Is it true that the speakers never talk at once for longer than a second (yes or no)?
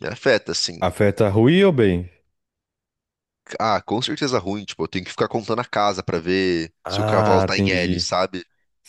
no